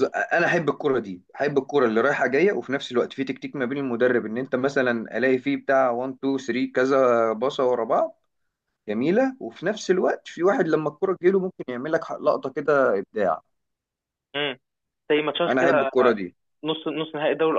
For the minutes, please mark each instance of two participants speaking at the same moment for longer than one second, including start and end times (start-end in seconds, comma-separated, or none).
none